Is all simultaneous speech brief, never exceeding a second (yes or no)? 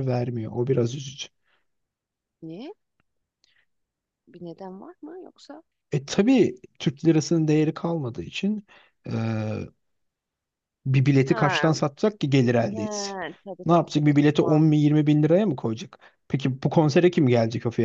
no